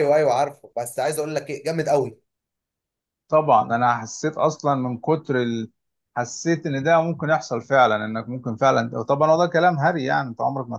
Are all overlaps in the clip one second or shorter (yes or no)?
yes